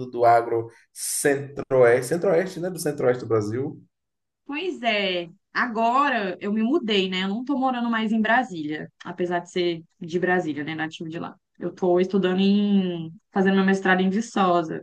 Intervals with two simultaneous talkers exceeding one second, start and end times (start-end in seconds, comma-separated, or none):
none